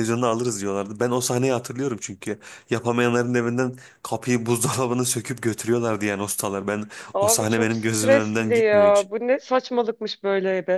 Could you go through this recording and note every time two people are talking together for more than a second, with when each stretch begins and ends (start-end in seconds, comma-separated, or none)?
7.1-9.1